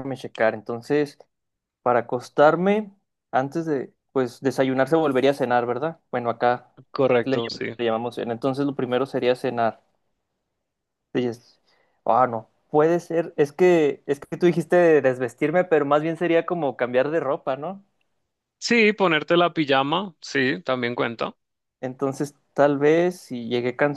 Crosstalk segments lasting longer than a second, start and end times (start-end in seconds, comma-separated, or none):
none